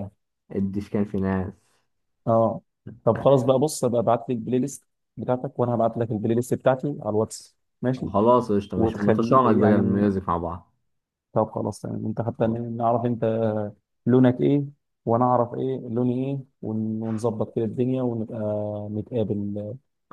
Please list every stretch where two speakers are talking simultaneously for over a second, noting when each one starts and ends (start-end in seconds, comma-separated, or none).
8.8-10.1